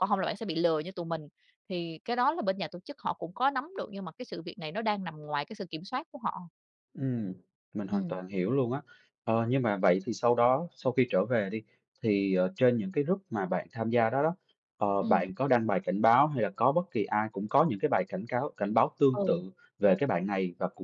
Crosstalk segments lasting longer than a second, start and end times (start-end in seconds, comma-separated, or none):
none